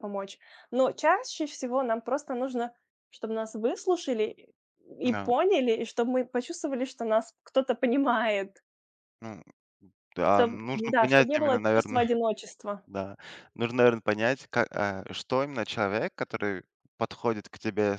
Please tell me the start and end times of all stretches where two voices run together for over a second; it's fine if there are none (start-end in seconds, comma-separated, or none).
10.3-12.0